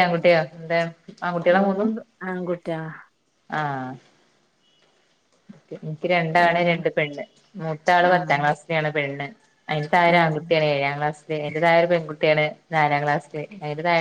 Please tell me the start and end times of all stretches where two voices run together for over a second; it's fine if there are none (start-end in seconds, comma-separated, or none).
none